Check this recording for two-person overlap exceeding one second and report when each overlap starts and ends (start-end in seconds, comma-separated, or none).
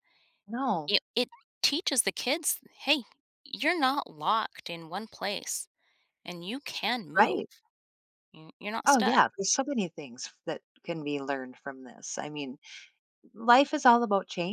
none